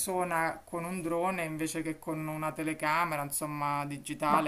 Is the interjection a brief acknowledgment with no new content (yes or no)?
no